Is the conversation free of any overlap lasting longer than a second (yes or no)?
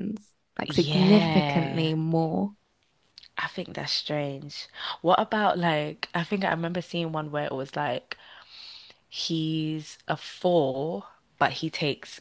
no